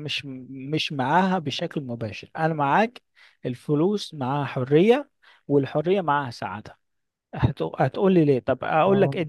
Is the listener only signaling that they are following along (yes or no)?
yes